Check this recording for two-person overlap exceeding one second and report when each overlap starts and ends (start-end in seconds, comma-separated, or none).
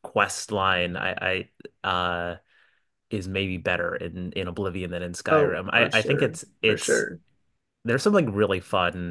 5.3-7.0